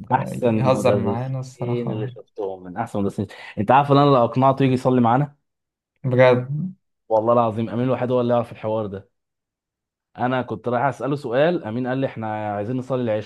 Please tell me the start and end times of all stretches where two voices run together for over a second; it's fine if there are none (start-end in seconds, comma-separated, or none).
0.5-2.1